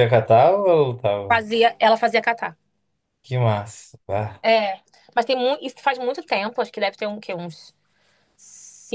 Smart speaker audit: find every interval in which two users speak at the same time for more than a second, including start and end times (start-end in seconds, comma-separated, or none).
none